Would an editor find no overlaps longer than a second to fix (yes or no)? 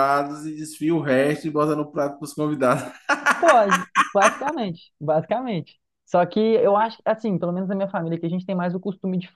yes